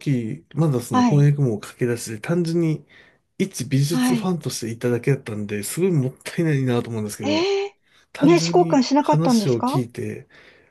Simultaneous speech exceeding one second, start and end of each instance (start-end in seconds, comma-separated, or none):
8.2-9.8